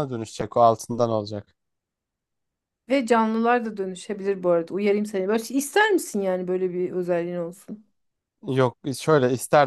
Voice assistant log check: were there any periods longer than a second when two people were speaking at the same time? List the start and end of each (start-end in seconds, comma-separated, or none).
none